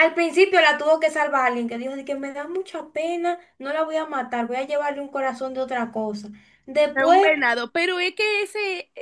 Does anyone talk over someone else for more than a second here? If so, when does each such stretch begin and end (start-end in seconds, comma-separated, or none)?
none